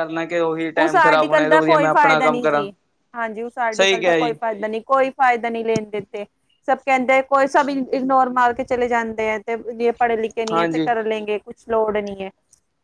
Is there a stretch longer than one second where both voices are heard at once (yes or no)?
yes